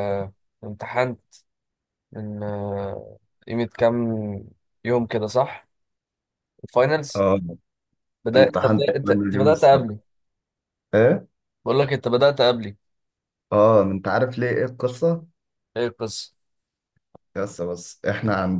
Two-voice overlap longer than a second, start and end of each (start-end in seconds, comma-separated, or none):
8.3-9.9